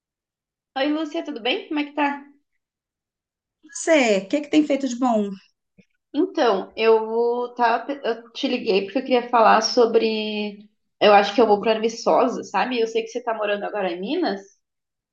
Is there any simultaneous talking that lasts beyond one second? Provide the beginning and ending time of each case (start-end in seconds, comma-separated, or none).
none